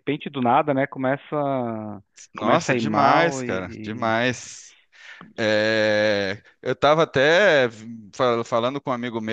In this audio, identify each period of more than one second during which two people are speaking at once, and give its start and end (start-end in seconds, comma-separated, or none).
2.4-4.1